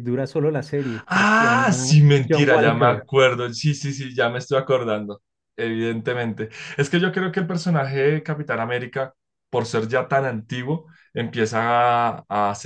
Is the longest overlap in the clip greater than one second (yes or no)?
yes